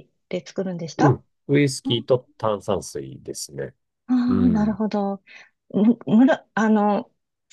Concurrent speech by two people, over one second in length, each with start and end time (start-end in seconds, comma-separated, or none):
none